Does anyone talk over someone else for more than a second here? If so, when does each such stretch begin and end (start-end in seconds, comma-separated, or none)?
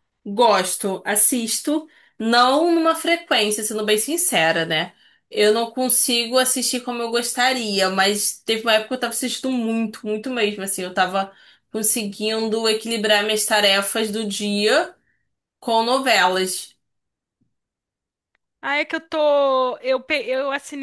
none